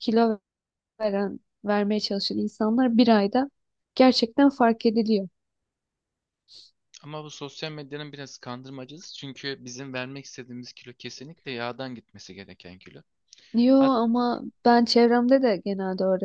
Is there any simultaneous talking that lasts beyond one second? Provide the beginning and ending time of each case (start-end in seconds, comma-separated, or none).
none